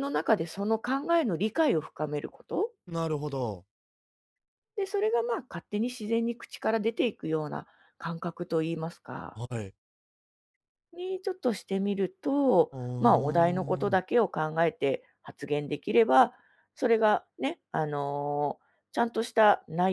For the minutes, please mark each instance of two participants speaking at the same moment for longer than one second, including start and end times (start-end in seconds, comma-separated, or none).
12.7-14.1